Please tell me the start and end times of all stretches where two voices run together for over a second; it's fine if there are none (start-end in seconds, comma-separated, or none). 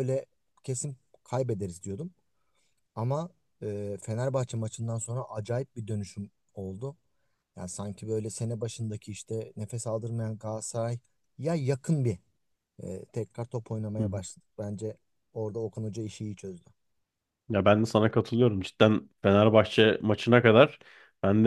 none